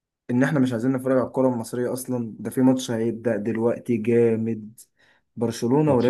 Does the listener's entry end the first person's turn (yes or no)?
no